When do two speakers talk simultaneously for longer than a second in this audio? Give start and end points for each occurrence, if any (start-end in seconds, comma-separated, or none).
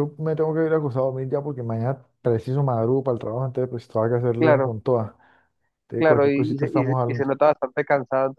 6.0-7.3